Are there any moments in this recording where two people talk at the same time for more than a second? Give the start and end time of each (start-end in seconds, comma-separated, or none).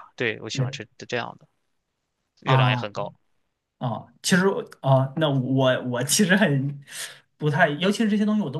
none